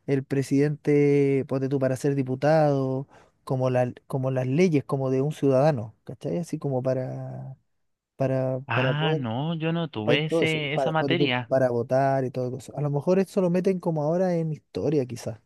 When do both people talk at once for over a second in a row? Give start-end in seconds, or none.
10.0-11.5